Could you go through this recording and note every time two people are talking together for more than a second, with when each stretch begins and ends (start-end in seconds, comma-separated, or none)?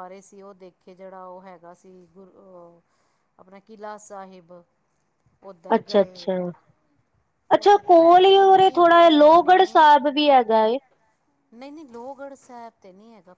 7.6-9.9